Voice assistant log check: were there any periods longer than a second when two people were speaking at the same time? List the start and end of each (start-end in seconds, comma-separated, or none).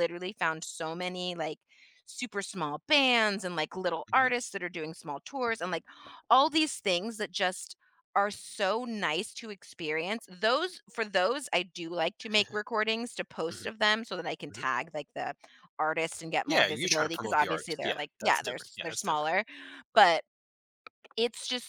16.4-19.3